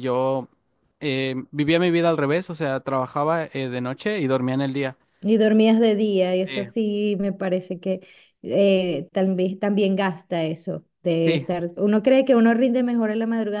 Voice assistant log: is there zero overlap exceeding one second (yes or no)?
yes